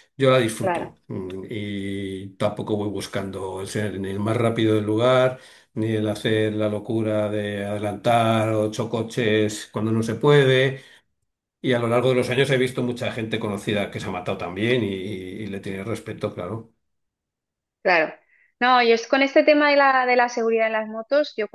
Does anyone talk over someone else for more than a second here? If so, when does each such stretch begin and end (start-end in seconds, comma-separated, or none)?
none